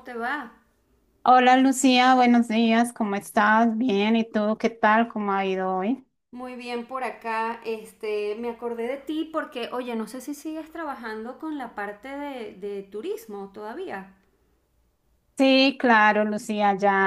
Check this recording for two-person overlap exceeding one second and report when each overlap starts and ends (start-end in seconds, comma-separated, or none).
none